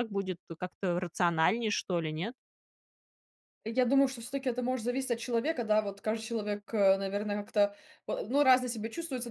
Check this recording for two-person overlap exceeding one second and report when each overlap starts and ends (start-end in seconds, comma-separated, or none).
none